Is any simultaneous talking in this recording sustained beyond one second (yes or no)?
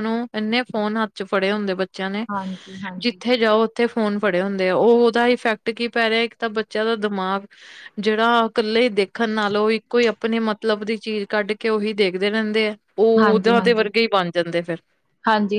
no